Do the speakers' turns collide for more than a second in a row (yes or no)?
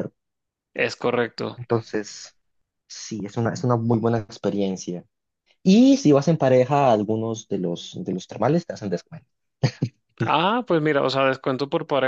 no